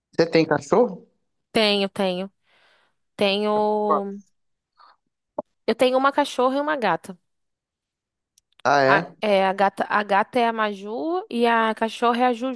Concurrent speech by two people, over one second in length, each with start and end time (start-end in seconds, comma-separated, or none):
none